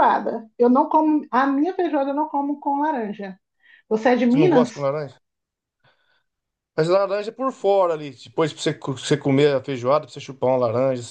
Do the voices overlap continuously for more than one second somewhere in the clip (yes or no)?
no